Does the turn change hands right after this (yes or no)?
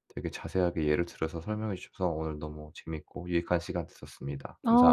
yes